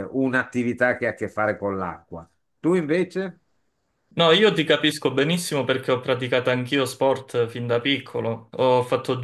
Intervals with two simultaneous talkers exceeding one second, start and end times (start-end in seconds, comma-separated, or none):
none